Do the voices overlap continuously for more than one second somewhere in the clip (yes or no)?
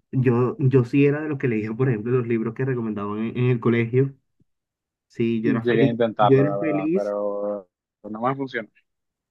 yes